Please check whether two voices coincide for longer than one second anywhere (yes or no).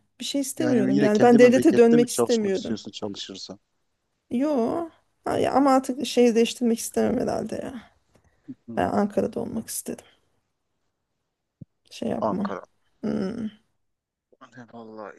yes